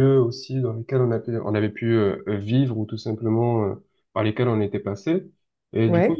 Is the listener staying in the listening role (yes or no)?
yes